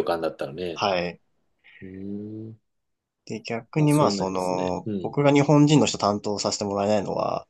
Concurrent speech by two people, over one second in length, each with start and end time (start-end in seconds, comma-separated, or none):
3.8-5.2